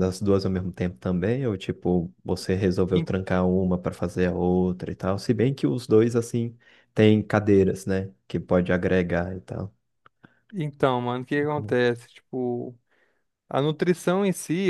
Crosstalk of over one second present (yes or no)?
no